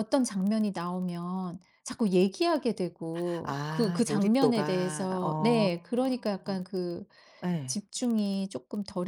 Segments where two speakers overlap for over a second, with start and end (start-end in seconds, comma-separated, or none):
3.4-5.7